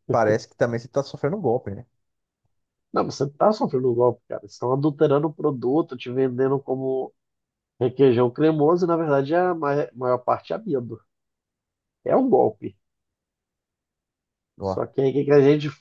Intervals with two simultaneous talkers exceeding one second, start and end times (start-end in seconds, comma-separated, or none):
none